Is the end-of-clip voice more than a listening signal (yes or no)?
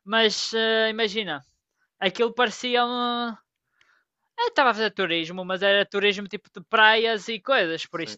yes